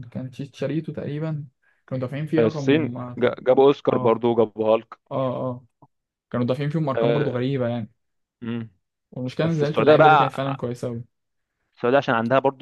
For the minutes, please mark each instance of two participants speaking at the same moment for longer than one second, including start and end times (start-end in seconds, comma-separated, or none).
9.4-10.6